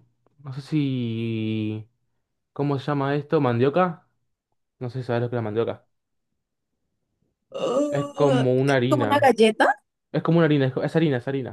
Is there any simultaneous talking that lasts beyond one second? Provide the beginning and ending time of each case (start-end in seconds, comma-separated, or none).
7.9-9.3